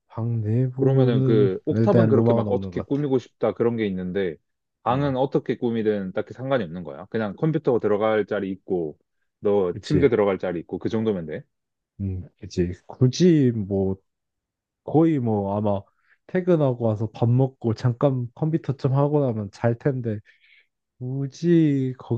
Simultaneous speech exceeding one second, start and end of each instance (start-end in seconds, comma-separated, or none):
0.7-3.0